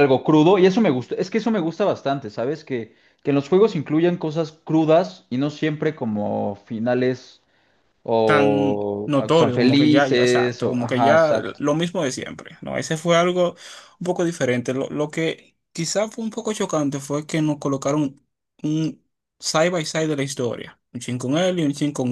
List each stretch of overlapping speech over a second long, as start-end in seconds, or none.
8.2-11.6